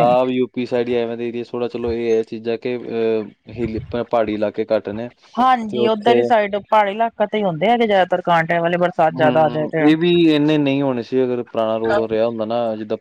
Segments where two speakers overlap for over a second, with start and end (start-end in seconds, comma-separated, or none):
none